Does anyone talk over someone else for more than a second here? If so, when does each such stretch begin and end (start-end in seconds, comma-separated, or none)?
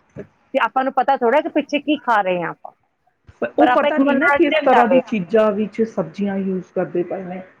3.6-5.0